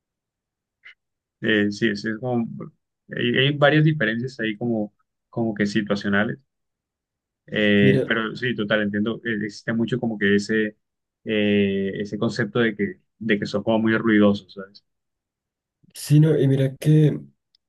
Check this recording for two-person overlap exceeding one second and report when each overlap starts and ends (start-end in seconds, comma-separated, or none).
none